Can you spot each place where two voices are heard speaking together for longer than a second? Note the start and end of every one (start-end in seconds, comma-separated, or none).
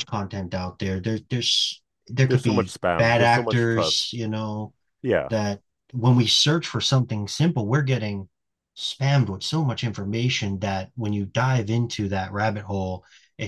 2.3-4.1